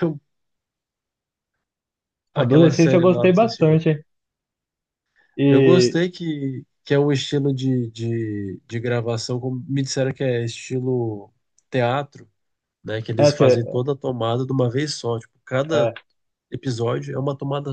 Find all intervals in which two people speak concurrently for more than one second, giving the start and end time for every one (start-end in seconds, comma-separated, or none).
2.4-4.0